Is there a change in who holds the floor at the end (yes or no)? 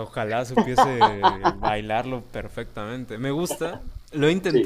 no